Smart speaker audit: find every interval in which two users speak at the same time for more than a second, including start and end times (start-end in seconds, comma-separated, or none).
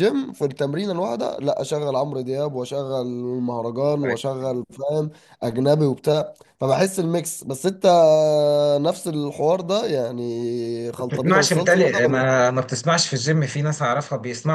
11.0-12.3